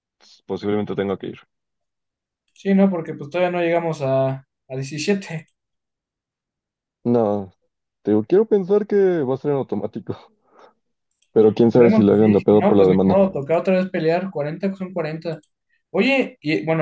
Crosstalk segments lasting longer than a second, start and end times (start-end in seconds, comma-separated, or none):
11.6-13.2